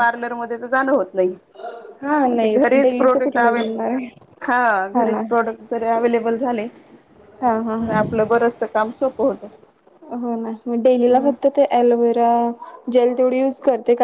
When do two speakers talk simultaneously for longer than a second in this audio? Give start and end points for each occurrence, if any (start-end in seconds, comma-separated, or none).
2.3-4.1